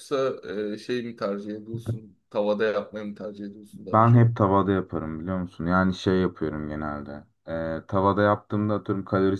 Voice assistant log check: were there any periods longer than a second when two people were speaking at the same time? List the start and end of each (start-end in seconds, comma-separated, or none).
none